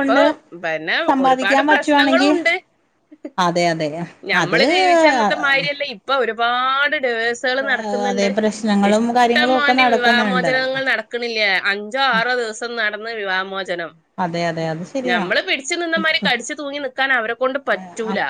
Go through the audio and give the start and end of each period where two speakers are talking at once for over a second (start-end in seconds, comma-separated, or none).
8.9-10.5